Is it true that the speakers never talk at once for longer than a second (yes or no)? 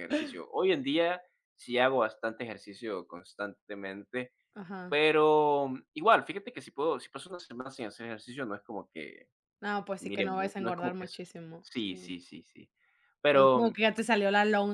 no